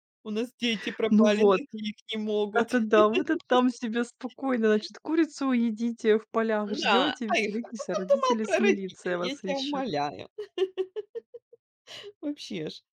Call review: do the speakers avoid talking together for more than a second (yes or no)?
no